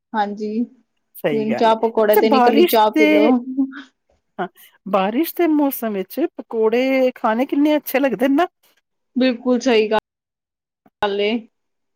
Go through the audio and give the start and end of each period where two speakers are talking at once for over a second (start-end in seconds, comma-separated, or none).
1.3-3.3